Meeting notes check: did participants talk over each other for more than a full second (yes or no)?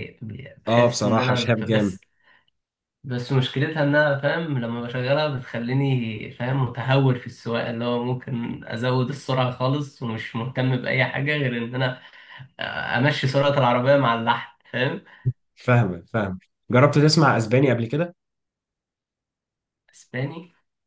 yes